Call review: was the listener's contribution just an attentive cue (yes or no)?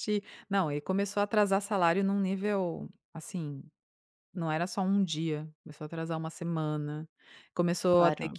yes